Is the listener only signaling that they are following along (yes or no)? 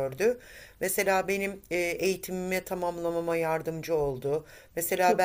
yes